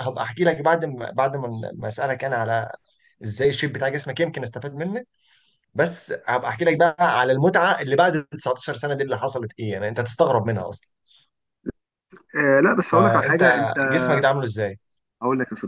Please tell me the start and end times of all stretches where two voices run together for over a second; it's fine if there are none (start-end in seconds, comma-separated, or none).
none